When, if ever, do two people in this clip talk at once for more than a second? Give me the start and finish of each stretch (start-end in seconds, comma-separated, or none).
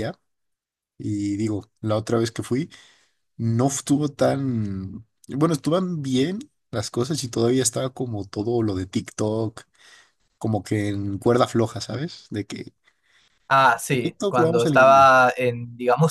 13.9-15.1